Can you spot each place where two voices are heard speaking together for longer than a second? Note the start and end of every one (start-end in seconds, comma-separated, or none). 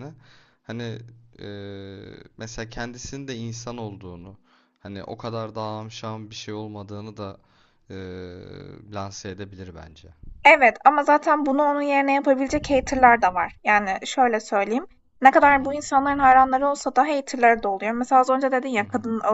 none